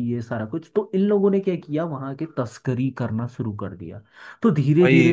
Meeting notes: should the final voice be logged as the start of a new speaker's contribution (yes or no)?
no